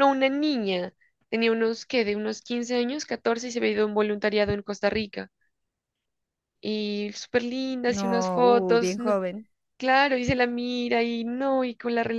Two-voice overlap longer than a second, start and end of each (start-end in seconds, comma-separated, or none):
7.9-9.1